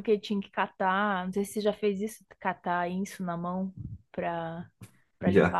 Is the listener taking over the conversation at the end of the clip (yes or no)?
no